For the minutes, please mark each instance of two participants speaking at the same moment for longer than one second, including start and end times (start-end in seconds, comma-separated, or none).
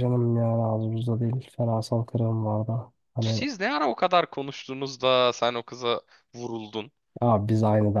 none